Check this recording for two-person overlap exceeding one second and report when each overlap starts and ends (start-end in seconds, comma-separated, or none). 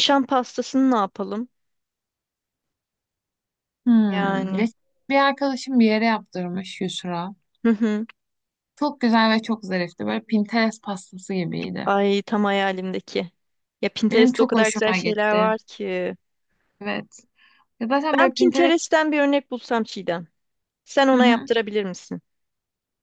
14.1-15.5